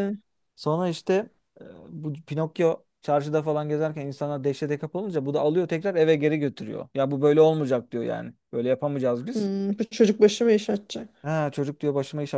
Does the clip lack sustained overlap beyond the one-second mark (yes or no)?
yes